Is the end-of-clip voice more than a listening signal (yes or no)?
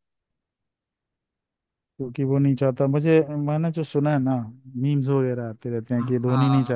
no